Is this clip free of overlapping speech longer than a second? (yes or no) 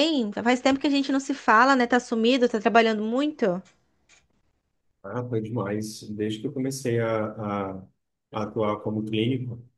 yes